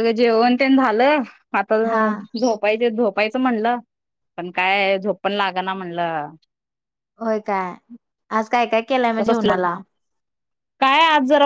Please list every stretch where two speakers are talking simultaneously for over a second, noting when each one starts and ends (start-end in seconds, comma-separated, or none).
none